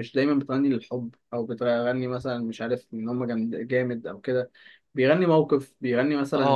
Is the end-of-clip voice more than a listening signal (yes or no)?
yes